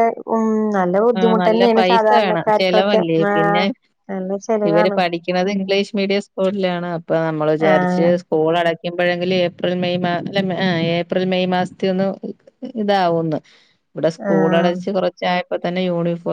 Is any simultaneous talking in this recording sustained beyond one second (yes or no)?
yes